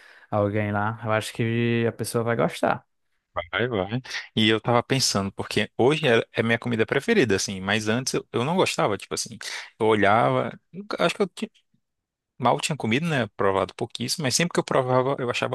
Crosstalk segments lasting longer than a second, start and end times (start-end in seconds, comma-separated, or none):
none